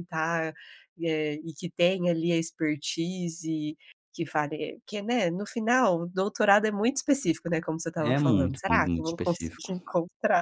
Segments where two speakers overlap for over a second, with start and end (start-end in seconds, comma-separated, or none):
8.0-9.7